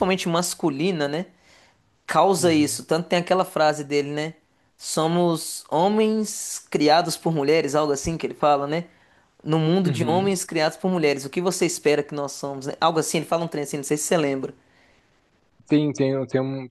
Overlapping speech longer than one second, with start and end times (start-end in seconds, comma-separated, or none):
none